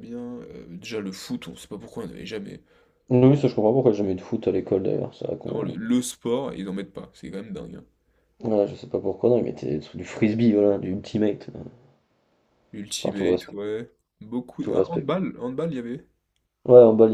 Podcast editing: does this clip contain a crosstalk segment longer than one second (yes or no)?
no